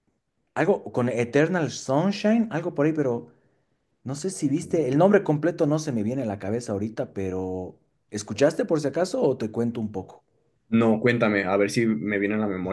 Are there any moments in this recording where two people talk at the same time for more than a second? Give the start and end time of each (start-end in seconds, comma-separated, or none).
none